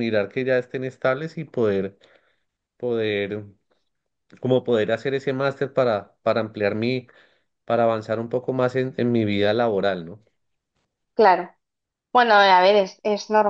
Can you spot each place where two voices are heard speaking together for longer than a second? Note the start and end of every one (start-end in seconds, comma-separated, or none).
none